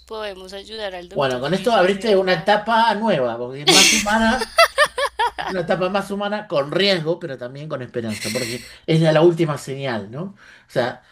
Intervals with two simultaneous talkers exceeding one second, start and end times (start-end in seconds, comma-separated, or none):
1.1-2.5